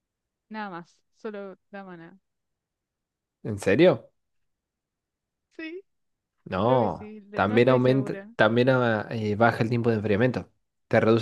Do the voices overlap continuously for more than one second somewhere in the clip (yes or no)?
yes